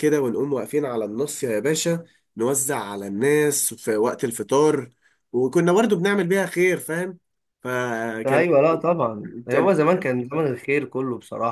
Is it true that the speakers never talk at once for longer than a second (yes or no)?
yes